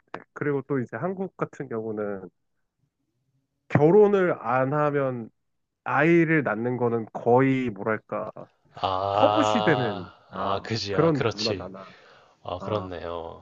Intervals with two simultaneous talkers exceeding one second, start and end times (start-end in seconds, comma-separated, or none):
10.3-11.7